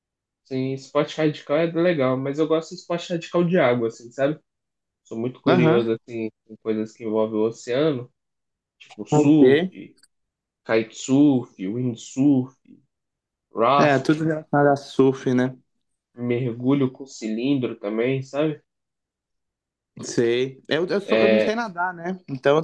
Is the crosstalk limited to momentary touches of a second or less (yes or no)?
yes